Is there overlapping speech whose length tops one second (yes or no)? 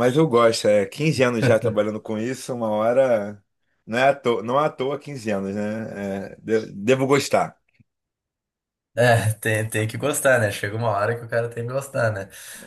no